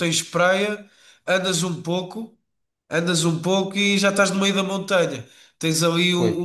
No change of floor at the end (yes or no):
yes